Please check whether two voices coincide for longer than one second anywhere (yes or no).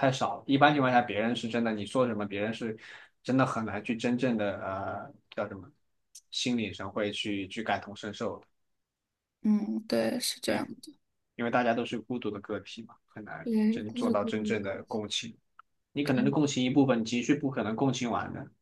yes